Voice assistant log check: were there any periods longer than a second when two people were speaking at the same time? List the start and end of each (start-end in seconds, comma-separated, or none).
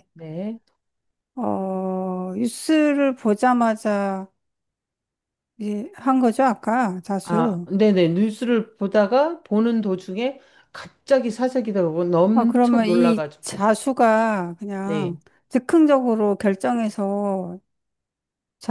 12.3-13.6